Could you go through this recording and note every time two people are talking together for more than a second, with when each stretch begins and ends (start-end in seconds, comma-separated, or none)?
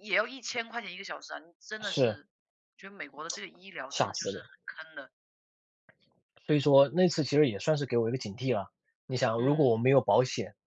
none